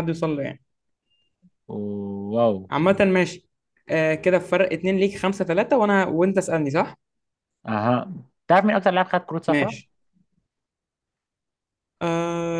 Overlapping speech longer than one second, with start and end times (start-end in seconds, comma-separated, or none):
none